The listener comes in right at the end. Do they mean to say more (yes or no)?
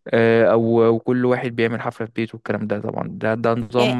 yes